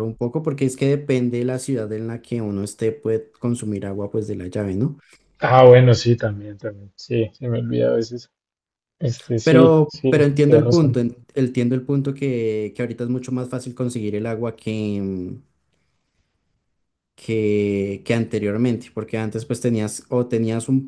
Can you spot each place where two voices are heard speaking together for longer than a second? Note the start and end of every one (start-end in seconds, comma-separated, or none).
9.4-11.0